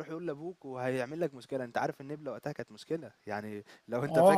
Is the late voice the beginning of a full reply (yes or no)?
yes